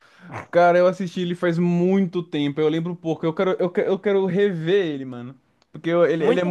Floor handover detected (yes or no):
yes